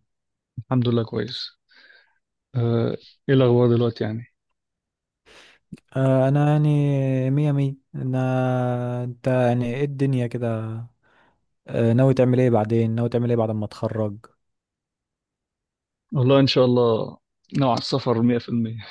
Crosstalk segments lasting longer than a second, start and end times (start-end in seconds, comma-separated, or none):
none